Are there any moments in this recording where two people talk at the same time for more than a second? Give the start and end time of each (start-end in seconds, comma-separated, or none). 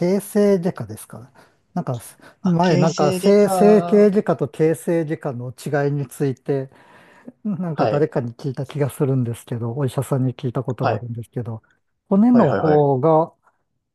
2.4-4.2